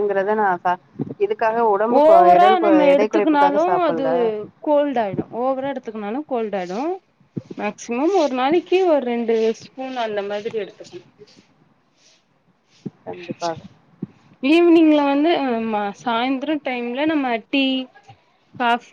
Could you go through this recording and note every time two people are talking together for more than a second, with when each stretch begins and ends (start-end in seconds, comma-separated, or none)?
2.0-4.0